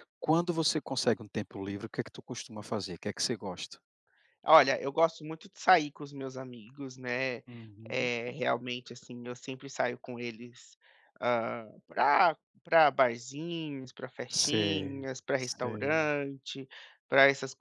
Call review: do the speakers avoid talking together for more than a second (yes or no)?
no